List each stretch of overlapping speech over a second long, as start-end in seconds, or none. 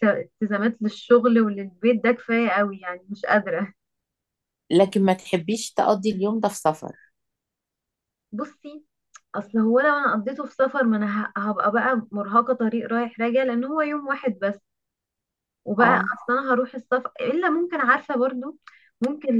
none